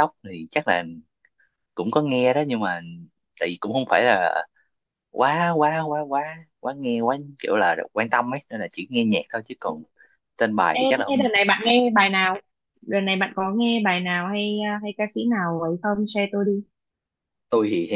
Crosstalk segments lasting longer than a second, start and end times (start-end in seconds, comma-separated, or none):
none